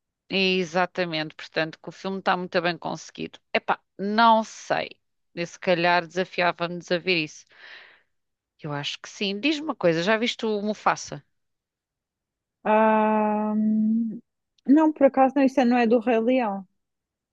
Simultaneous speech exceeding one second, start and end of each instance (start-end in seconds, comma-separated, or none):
none